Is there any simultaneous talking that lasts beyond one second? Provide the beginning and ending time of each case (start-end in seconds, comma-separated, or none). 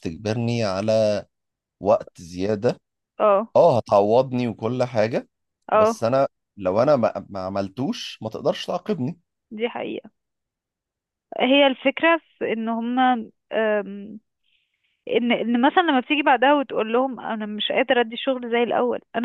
none